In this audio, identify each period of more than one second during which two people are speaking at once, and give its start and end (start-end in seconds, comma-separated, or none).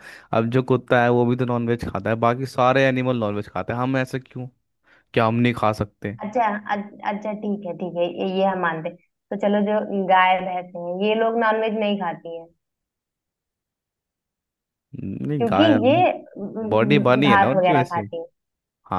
16.7-18.0